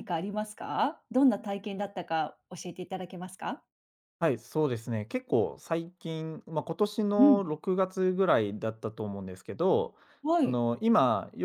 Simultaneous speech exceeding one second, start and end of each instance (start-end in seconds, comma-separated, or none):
none